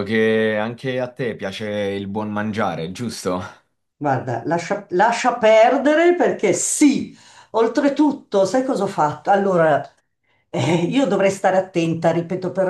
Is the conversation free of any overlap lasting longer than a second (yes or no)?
yes